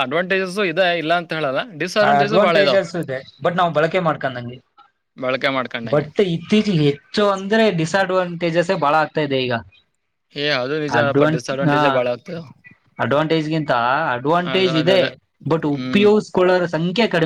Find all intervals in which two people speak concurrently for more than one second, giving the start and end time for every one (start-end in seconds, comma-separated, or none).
none